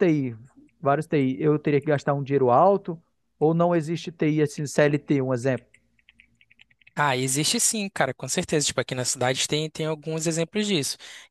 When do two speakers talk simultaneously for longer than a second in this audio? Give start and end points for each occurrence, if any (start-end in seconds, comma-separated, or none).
none